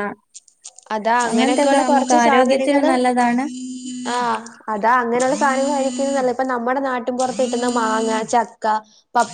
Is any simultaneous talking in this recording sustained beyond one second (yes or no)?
yes